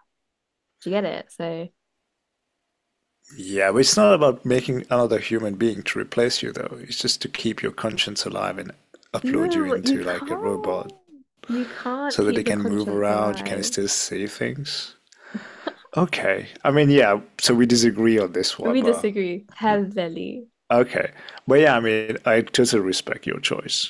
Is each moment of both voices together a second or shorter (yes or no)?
no